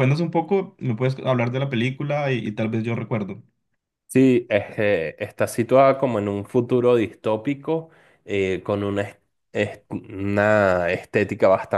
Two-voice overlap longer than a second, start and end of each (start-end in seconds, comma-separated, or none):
none